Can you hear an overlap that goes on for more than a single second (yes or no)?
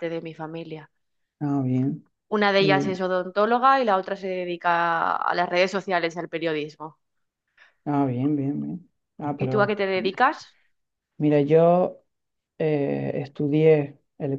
no